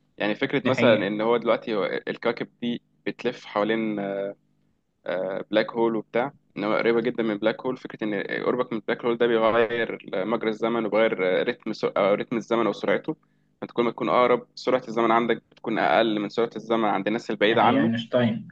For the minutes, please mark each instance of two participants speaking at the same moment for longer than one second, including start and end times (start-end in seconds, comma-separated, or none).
none